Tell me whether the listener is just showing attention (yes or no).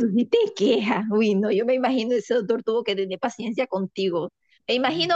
yes